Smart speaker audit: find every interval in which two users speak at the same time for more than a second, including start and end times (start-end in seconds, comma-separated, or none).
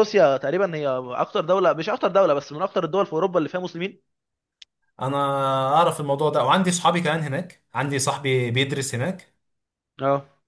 none